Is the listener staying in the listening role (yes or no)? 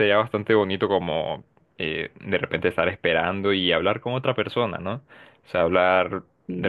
yes